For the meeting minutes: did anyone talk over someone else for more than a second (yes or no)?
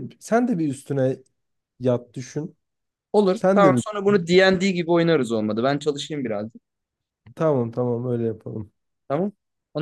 no